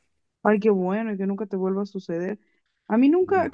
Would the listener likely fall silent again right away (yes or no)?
yes